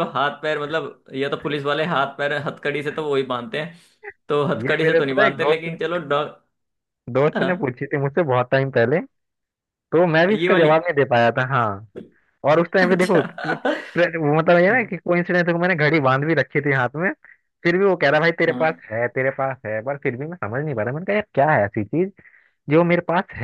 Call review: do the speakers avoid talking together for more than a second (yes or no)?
no